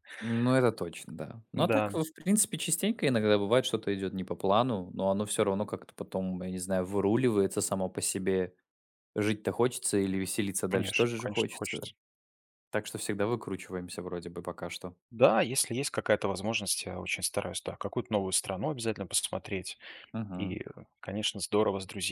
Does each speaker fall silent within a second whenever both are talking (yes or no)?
no